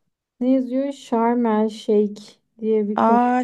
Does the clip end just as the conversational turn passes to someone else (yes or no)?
yes